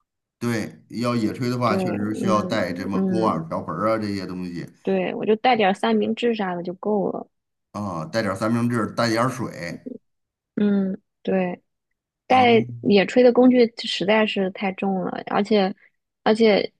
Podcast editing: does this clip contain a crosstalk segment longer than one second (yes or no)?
yes